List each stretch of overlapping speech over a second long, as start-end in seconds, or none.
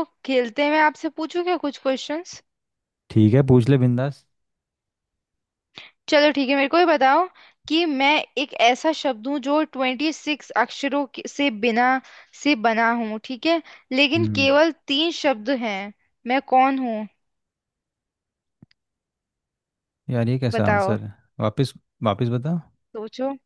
none